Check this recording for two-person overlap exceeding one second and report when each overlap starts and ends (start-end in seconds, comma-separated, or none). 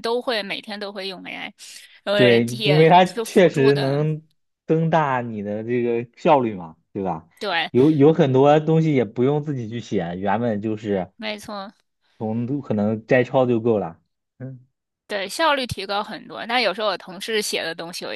2.1-4.1